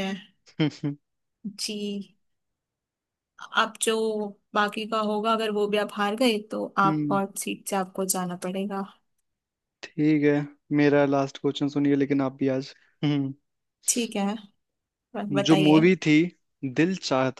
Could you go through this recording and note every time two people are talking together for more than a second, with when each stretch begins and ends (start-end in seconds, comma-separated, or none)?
none